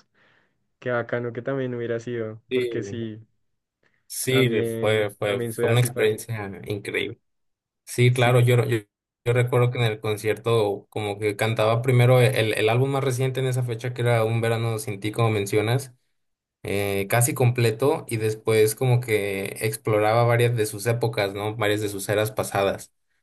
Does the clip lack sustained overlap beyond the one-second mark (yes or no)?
no